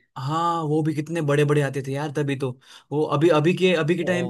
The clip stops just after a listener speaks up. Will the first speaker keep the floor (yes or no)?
yes